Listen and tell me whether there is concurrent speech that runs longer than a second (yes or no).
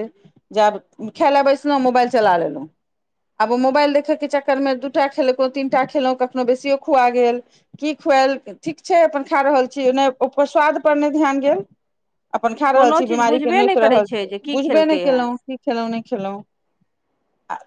yes